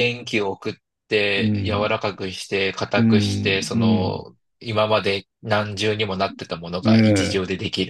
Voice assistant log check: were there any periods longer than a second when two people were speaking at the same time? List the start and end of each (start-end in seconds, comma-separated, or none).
3.0-4.2